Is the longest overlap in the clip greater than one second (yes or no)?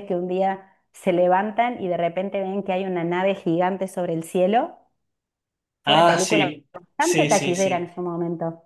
yes